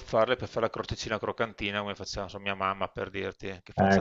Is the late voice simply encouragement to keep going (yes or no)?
no